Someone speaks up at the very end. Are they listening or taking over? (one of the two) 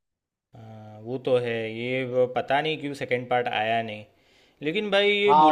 taking over